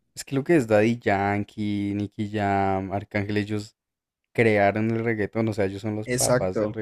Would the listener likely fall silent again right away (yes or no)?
no